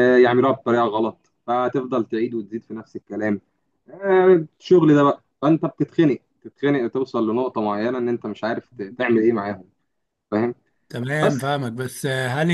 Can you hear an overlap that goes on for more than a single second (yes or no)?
no